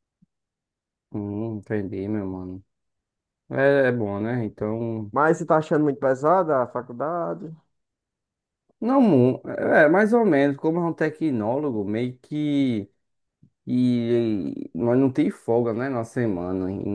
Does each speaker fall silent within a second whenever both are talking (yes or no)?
yes